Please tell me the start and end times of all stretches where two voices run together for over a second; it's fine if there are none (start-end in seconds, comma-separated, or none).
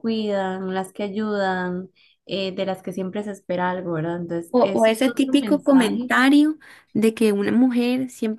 4.5-6.1